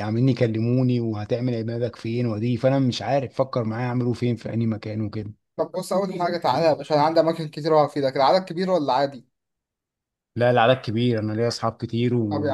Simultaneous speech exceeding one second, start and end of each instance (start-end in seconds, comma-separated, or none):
none